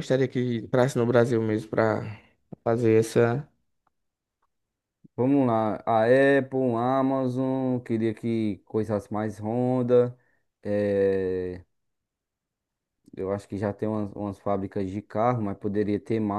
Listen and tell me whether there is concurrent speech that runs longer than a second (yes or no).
no